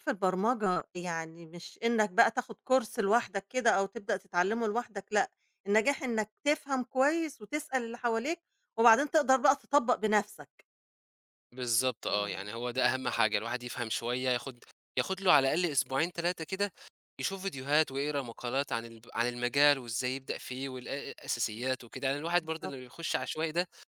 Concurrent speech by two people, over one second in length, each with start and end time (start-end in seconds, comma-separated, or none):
none